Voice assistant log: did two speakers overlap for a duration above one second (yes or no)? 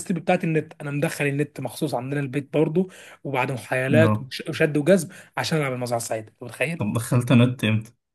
no